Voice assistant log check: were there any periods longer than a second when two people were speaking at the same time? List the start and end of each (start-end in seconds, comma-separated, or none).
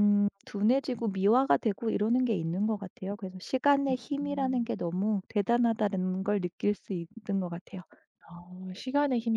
none